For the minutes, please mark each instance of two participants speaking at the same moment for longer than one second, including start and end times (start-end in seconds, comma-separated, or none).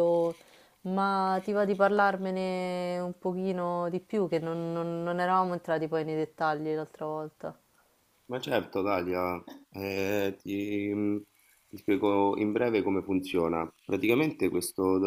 none